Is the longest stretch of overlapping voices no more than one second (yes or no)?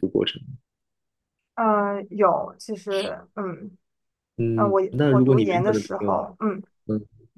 no